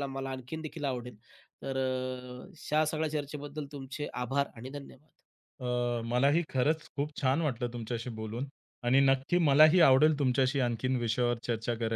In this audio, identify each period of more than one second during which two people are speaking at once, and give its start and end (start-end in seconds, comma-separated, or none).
none